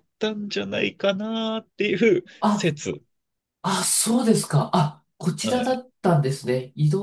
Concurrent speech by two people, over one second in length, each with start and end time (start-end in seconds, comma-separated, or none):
none